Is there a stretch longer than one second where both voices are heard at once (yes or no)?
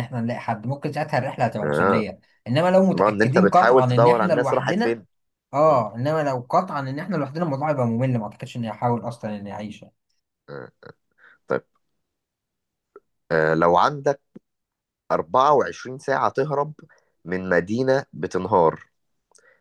yes